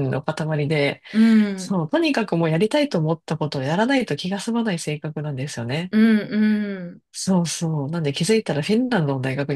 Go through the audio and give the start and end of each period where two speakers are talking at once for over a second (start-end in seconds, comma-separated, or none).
none